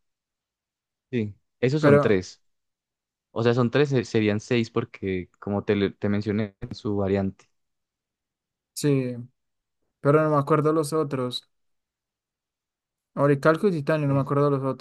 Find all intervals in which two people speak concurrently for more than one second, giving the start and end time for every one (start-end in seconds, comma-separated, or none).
none